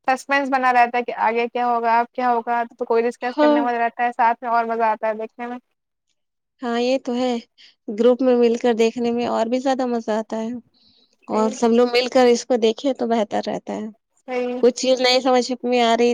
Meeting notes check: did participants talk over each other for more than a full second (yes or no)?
no